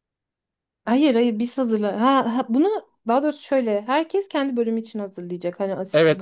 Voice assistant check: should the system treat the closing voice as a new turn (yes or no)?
yes